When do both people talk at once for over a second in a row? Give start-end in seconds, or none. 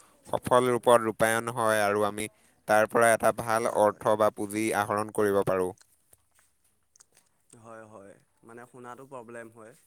none